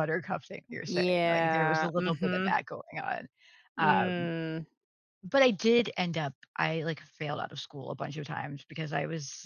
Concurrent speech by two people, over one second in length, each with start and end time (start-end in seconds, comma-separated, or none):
0.8-2.6